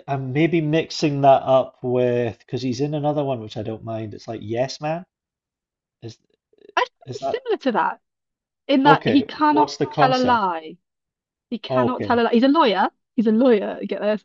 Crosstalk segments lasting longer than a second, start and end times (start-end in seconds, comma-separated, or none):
8.8-10.4